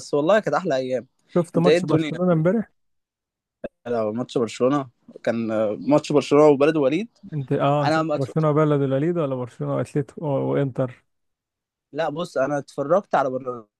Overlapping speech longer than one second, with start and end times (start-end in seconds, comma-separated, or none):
none